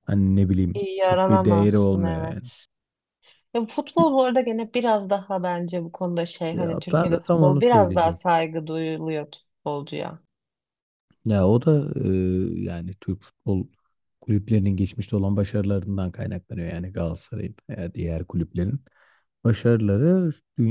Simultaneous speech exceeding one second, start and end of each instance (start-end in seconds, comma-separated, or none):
0.7-2.5, 6.5-8.3